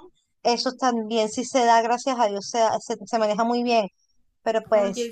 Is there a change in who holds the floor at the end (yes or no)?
yes